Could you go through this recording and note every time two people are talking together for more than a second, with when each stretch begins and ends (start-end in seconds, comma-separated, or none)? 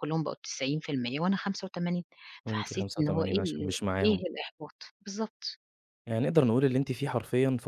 2.5-4.2